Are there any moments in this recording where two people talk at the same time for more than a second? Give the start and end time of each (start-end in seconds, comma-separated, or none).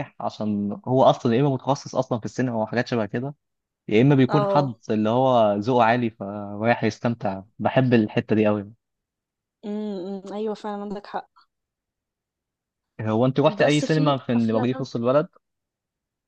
13.6-14.9